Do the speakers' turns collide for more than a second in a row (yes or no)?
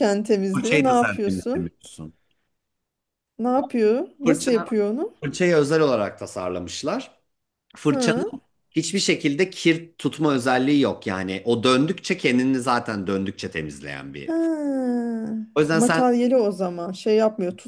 yes